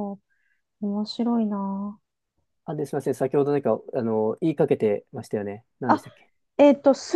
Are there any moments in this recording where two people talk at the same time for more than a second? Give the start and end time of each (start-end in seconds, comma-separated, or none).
none